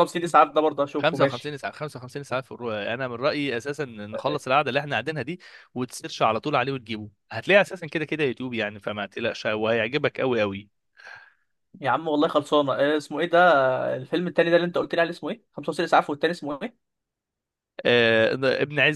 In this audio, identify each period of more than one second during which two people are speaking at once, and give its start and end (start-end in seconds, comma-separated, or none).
none